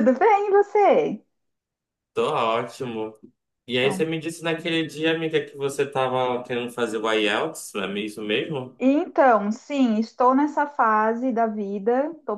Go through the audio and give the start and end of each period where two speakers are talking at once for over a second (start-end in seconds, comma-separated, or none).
none